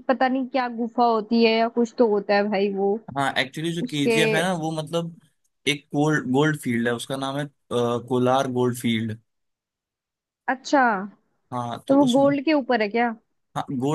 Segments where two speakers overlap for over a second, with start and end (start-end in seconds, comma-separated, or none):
none